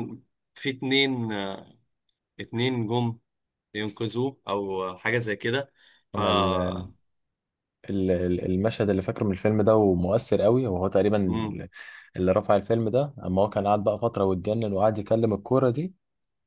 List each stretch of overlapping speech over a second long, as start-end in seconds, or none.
none